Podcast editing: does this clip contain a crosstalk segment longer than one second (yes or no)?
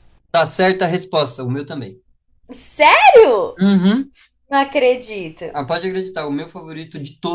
no